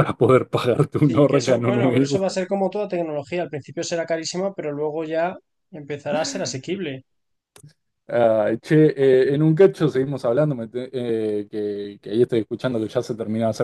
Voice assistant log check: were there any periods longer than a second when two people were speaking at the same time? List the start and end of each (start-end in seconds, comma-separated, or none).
1.0-2.4